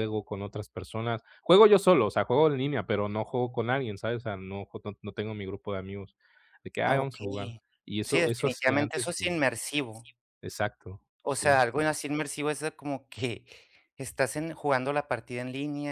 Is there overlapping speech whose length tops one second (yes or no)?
yes